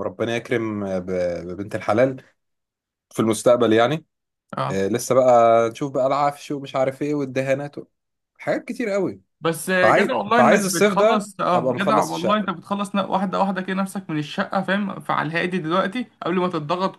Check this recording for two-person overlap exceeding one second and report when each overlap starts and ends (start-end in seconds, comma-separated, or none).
9.8-12.5